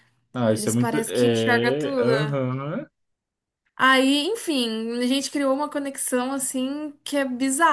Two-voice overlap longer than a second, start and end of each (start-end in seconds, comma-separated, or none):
0.5-2.1